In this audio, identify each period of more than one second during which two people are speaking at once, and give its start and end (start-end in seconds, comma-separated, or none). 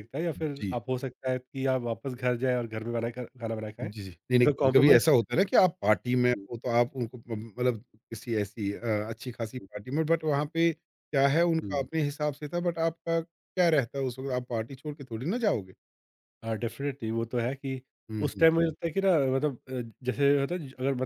3.8-5.0